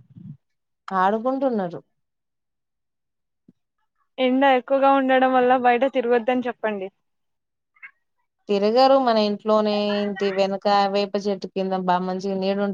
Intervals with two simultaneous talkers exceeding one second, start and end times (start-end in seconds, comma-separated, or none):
none